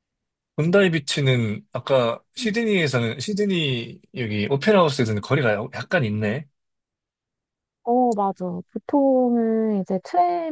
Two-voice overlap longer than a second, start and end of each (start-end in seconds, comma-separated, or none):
none